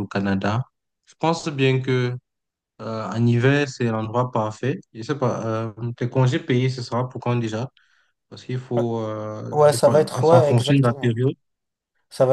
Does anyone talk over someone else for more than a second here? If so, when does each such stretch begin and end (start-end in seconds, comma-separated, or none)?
9.5-11.2